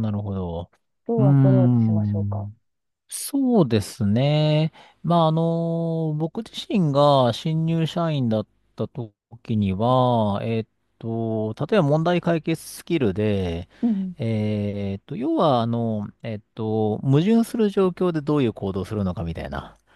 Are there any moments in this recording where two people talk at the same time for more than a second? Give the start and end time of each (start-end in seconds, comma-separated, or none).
1.2-2.5